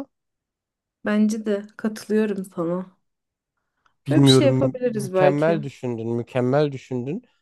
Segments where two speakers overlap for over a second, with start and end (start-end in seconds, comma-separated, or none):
4.1-5.6